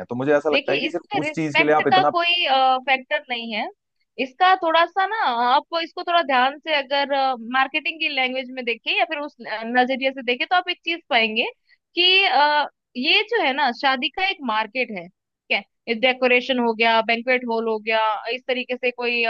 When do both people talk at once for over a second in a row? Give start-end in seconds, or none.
0.5-2.1